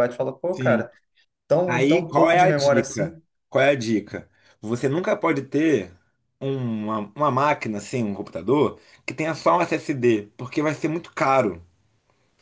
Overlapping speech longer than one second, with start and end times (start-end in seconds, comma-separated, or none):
1.7-3.2